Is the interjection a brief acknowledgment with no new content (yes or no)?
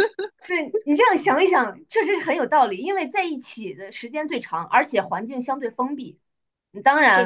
no